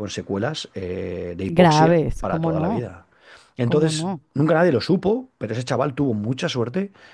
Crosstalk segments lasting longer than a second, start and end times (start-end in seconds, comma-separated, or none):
1.5-2.9